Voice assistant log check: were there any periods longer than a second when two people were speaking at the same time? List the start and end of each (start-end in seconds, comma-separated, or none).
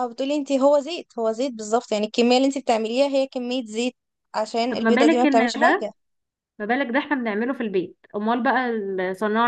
4.7-5.9